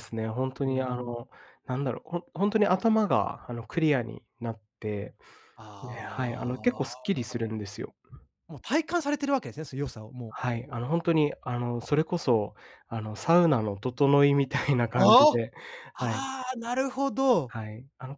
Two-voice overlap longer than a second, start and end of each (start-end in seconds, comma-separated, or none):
5.8-7.1